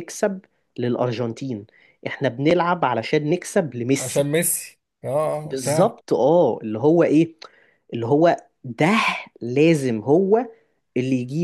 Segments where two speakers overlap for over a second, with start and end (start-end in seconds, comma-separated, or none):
none